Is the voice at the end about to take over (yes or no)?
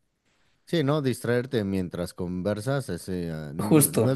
no